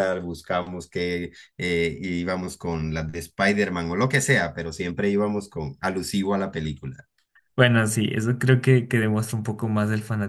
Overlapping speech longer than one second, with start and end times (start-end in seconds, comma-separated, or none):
none